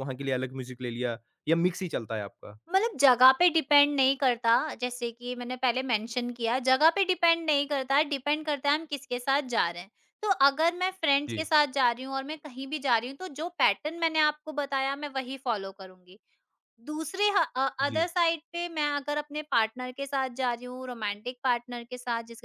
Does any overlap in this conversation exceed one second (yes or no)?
no